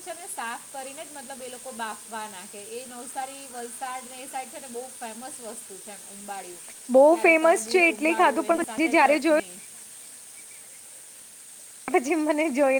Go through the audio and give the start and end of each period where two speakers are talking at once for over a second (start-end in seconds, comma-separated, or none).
7.1-9.4